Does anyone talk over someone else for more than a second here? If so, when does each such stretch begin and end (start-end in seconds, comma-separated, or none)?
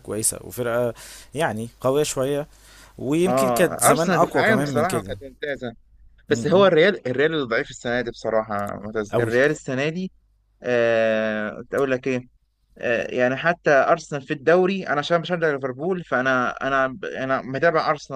3.3-5.1